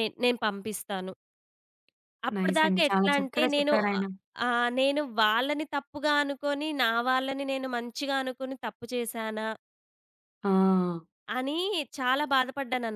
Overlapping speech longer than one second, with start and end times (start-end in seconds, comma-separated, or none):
2.4-4.0